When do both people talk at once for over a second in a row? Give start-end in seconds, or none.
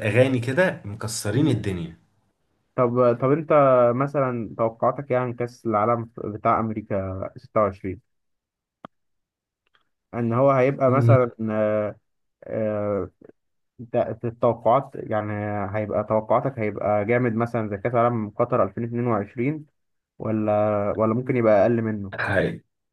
none